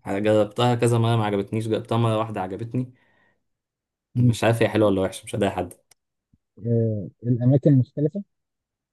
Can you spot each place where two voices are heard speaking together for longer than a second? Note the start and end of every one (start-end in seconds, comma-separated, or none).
none